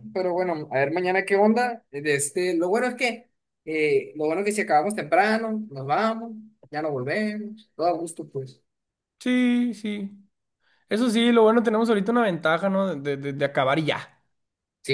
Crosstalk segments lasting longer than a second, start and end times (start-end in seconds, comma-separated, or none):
none